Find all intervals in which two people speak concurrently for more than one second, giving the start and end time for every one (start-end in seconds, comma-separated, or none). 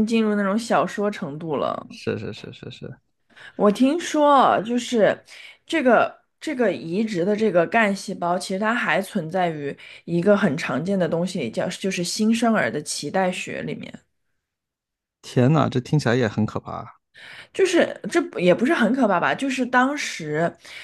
none